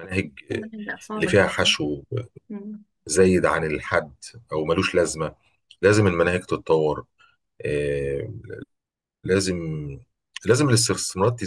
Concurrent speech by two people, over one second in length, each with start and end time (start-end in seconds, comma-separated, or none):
none